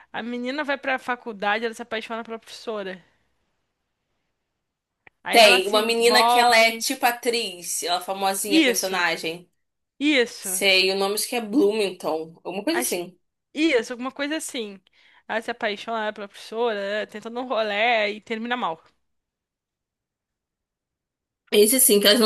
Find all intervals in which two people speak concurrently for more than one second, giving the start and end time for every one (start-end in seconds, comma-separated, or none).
5.3-6.8